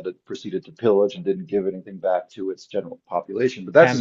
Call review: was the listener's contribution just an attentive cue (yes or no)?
no